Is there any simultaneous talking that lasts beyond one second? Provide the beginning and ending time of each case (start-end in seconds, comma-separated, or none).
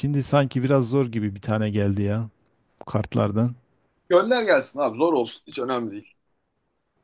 none